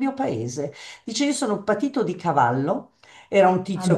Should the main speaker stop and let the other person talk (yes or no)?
no